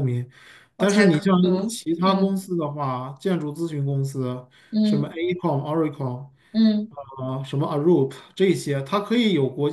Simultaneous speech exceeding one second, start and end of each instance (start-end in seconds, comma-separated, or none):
0.8-2.5